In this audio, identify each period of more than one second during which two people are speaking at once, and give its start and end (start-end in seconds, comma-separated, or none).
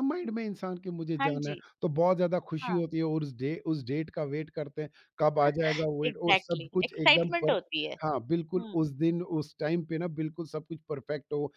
6.1-7.6